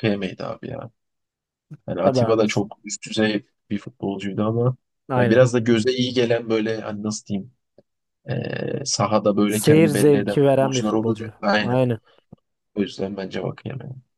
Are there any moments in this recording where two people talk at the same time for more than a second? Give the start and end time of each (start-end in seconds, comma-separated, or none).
9.5-11.8